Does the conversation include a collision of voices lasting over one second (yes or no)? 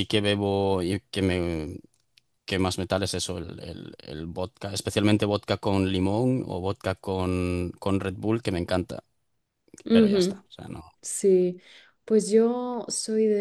no